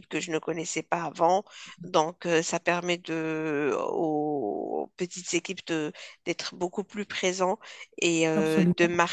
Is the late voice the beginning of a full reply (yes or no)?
no